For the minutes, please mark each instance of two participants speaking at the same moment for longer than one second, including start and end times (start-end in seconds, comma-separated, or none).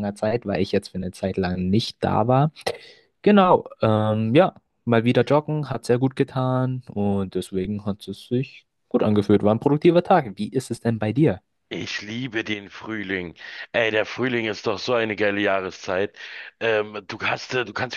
none